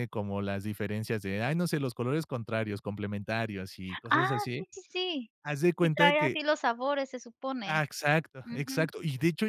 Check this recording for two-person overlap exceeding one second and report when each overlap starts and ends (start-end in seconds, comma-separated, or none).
none